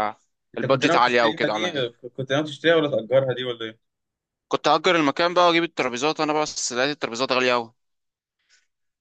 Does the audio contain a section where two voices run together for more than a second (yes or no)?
yes